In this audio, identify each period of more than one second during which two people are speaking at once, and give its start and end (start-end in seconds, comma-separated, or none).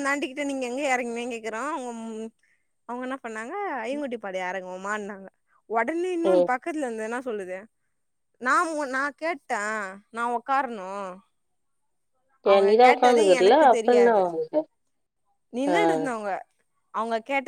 12.5-14.2